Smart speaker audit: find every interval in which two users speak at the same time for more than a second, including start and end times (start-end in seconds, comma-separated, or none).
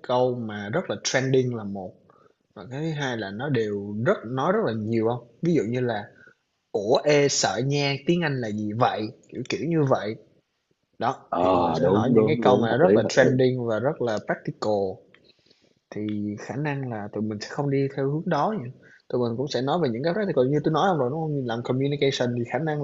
11.3-13.3